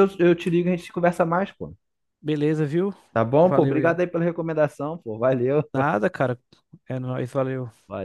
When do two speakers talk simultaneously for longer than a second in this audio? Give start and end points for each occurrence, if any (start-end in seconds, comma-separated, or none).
none